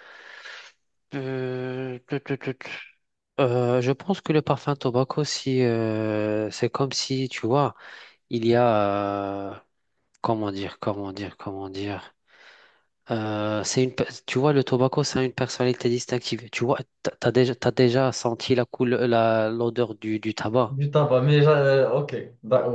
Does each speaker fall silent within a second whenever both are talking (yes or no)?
yes